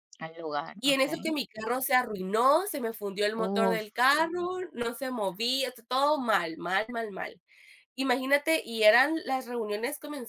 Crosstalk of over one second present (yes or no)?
no